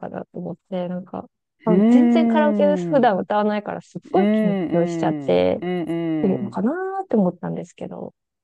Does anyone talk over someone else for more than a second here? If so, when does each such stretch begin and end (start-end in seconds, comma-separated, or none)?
1.7-3.1, 4.1-5.6